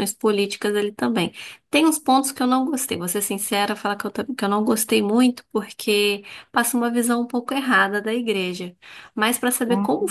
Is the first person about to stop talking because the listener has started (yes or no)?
no